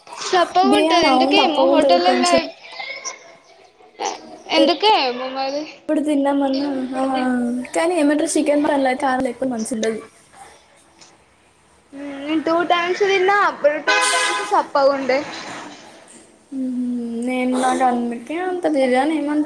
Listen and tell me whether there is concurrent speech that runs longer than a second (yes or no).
yes